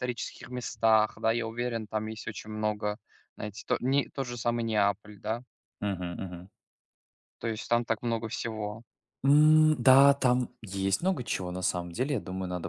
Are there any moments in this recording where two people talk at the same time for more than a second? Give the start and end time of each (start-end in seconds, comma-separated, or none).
none